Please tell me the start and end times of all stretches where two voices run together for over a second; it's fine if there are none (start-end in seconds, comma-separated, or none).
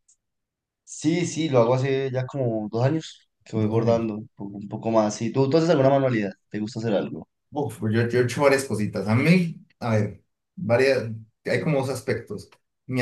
none